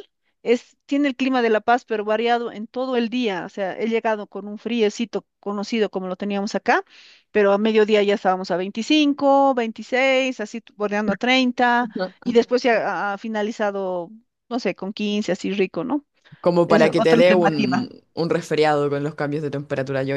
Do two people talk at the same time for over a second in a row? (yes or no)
yes